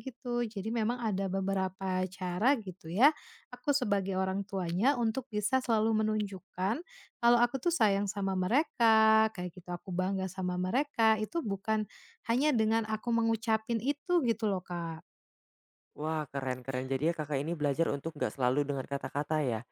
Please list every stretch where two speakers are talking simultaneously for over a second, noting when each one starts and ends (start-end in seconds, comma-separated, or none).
none